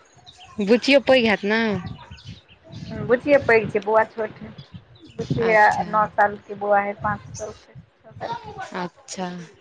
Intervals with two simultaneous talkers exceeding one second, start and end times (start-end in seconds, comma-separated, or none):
none